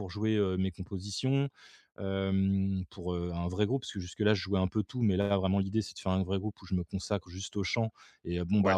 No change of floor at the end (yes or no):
yes